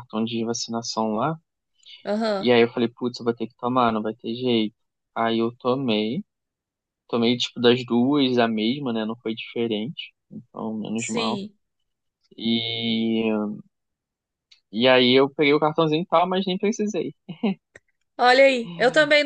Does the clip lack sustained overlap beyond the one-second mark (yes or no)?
yes